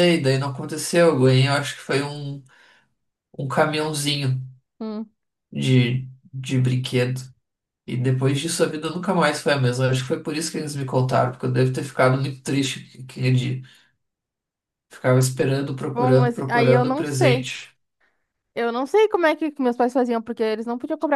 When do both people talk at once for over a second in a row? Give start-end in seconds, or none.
15.9-17.5